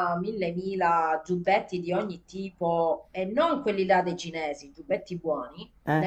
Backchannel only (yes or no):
yes